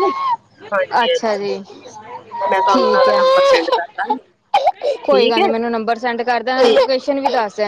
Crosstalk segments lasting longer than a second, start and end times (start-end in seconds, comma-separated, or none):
2.5-3.9